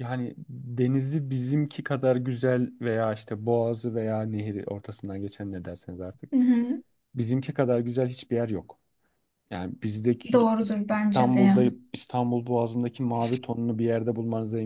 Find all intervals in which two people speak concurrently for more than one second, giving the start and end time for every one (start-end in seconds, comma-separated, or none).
10.3-11.6